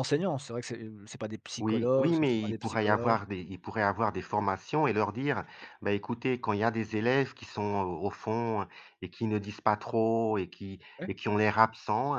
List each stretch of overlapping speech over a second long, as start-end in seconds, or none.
1.6-3.2